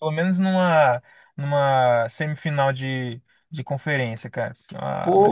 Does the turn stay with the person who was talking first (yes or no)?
no